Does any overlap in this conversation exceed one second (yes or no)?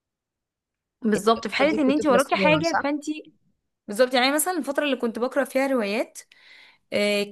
yes